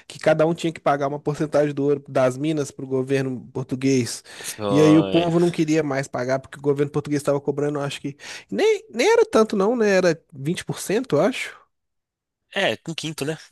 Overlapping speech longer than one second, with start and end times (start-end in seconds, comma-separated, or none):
none